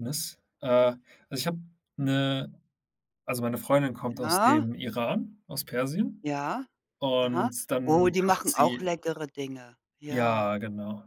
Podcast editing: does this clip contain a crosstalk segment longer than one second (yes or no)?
yes